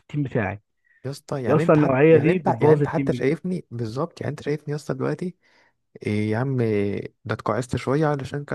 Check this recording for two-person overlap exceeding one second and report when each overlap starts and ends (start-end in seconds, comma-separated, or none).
1.5-3.3